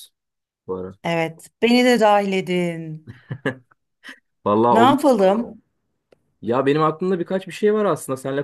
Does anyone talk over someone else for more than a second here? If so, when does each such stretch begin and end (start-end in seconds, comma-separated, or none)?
none